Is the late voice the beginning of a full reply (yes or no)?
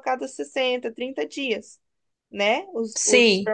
no